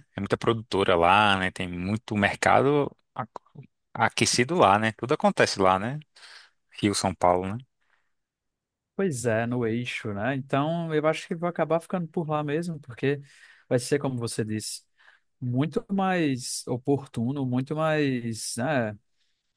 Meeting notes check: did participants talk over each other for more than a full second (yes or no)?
no